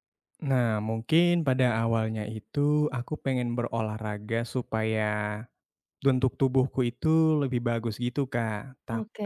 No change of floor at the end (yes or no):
yes